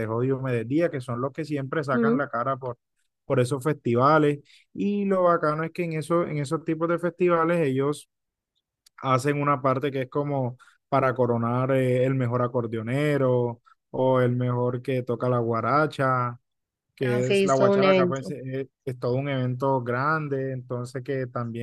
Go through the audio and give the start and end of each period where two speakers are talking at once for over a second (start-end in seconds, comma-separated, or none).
17.0-18.3